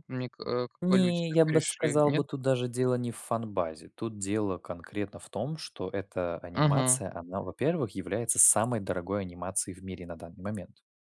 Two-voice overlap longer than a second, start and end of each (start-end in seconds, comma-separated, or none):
0.8-2.2